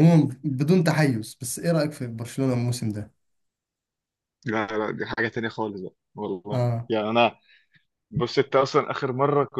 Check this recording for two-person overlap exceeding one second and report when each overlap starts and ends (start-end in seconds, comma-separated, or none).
none